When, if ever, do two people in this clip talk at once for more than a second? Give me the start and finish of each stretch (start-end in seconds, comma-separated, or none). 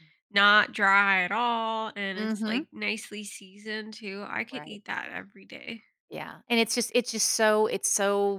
none